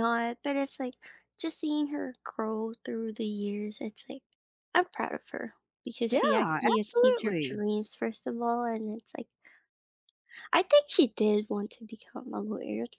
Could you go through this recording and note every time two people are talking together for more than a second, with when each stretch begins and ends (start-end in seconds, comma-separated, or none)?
6.1-7.6